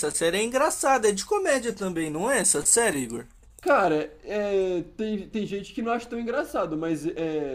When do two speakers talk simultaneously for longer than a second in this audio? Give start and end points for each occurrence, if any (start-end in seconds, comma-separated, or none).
none